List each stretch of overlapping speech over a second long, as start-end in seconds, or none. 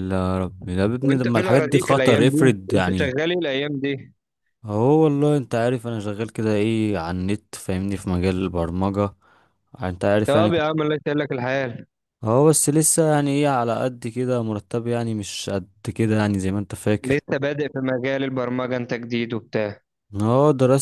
1.0-3.1